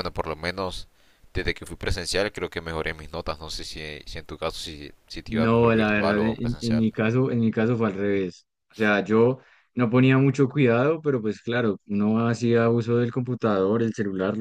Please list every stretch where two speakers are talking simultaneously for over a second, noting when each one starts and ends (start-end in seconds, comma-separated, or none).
5.2-6.8